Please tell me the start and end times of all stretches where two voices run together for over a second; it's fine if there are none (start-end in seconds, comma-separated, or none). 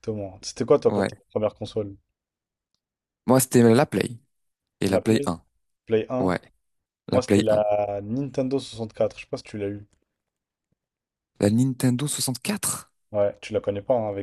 none